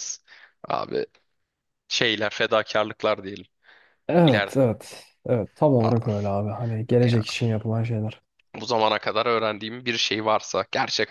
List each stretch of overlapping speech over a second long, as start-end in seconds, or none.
none